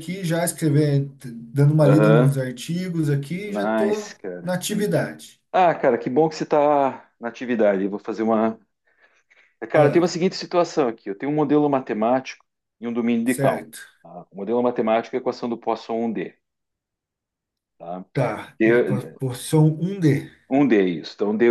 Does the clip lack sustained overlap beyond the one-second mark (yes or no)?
no